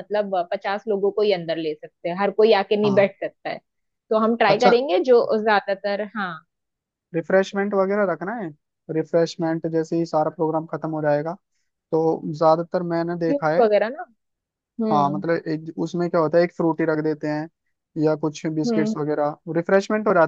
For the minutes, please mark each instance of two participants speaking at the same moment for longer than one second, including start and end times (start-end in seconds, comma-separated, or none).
none